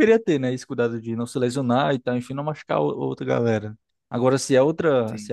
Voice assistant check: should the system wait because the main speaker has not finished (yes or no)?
yes